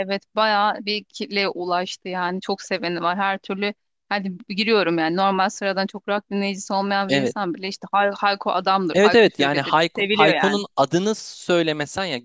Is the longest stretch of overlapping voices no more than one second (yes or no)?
no